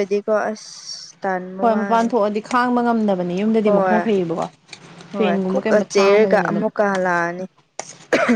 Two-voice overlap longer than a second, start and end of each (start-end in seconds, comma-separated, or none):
5.2-6.7